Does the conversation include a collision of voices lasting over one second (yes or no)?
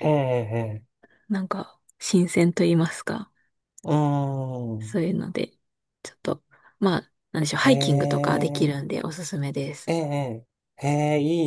yes